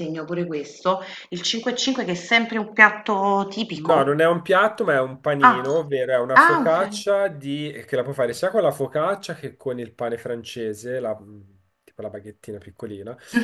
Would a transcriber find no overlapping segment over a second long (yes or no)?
yes